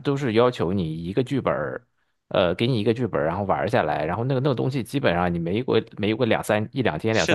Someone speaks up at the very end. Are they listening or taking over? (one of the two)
taking over